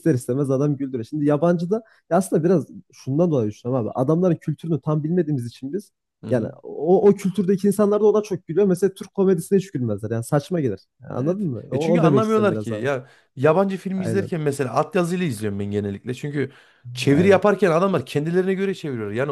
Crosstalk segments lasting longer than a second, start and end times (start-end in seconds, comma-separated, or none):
11.2-12.9